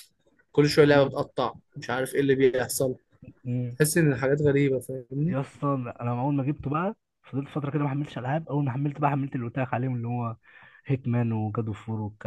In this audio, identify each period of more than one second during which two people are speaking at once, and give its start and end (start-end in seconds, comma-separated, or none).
none